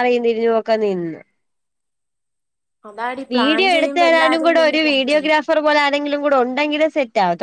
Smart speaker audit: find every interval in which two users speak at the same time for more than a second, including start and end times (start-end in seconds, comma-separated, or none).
3.3-5.3